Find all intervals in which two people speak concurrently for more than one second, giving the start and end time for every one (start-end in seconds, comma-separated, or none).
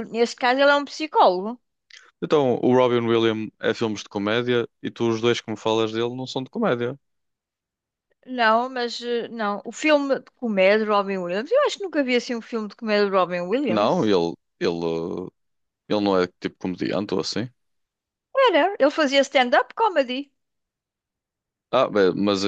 none